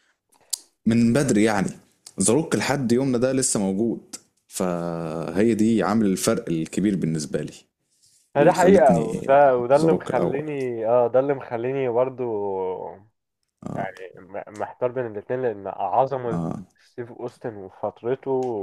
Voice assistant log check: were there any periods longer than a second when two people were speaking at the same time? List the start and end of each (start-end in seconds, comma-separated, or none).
8.4-10.5